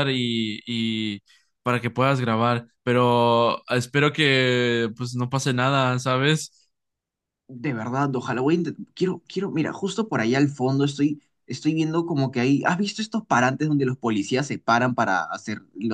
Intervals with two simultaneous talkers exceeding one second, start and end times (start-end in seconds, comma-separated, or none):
none